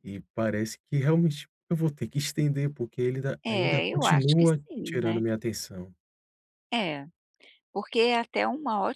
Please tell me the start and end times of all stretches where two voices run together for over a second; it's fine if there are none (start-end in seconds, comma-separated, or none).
3.4-5.2